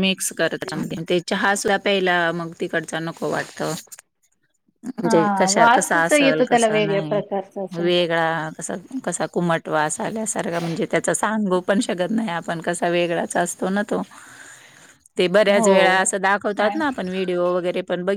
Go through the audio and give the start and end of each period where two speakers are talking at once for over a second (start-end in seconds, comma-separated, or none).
5.0-7.2